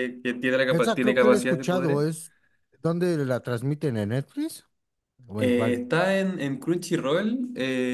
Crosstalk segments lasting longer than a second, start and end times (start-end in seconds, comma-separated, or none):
0.7-2.0